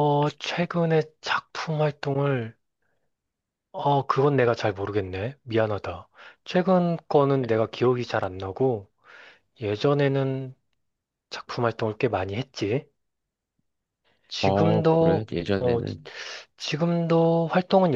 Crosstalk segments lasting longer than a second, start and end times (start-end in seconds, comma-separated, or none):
14.4-16.0